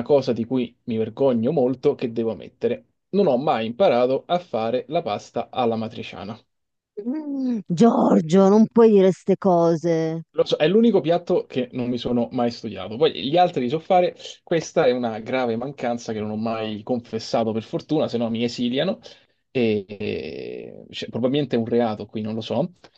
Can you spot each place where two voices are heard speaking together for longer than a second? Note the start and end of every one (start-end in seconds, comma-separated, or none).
none